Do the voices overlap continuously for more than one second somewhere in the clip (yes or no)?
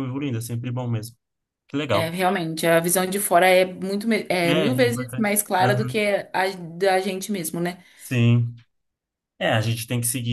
yes